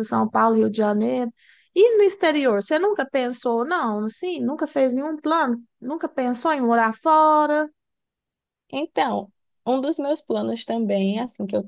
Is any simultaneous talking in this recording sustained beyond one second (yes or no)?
no